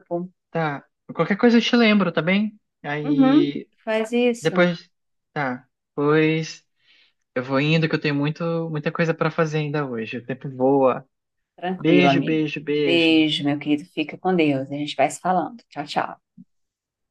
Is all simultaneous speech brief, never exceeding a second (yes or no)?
no